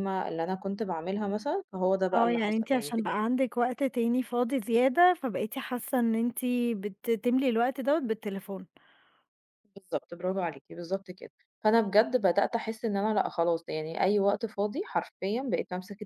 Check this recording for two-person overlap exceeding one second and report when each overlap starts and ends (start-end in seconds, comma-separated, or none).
2.1-3.4